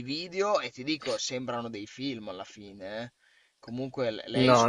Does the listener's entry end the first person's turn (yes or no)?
yes